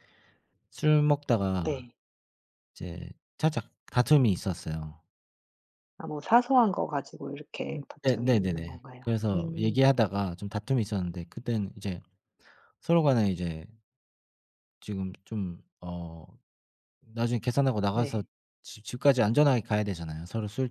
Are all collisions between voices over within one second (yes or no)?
no